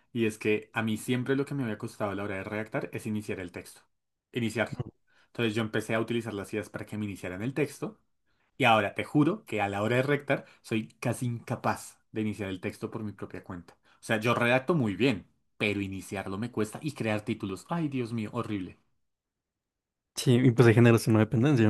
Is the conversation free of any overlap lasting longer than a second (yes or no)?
yes